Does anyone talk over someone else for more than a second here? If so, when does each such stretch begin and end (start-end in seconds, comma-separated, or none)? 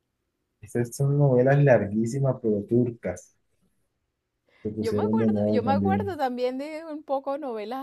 4.8-6.2